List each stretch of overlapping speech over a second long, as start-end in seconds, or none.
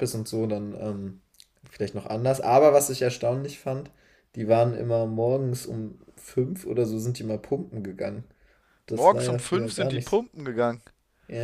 8.9-10.2